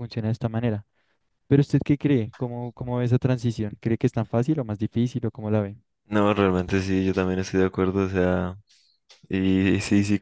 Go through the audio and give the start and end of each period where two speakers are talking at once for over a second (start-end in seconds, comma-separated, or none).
none